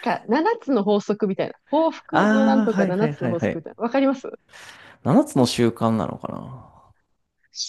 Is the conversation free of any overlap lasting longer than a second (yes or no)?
no